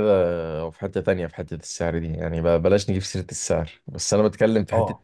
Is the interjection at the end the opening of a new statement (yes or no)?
no